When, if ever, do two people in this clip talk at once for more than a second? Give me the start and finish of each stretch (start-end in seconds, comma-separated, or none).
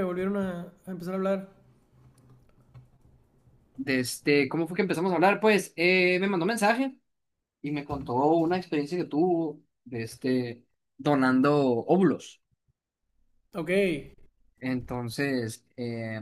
none